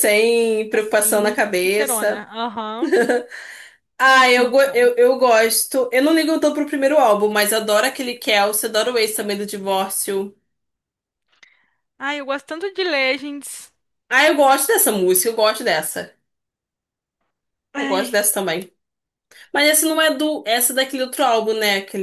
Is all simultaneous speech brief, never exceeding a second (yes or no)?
no